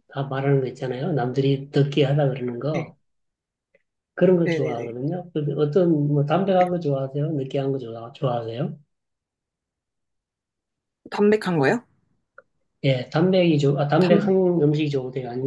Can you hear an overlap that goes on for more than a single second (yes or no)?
no